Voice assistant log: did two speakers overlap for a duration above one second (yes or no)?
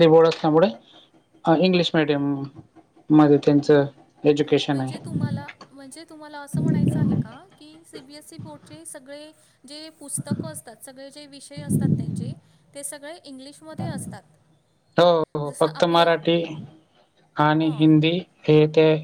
no